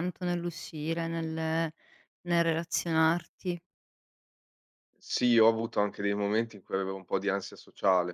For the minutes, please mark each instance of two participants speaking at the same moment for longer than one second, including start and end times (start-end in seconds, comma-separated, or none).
none